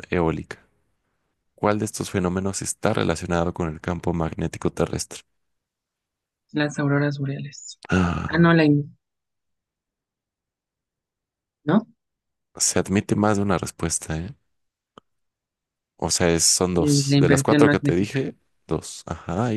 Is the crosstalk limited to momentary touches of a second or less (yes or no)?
no